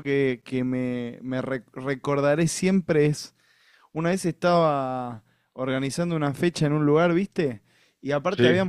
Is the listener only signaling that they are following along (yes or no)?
yes